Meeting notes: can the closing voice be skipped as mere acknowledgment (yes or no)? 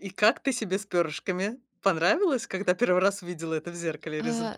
no